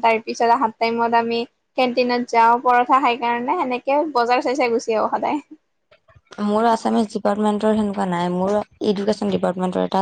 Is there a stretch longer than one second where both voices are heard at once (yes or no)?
no